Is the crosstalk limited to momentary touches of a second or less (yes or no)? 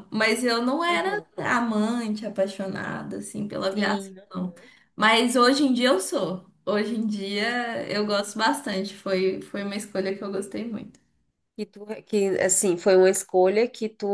yes